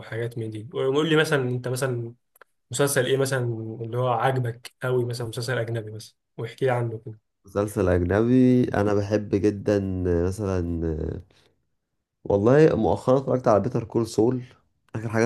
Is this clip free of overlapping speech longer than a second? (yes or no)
yes